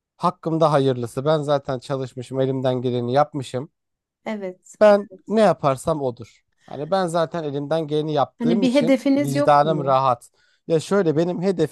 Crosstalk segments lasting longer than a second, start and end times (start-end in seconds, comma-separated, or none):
8.4-10.0